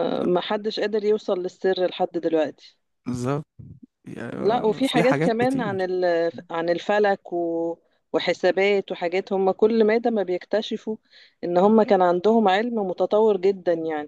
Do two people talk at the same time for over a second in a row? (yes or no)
yes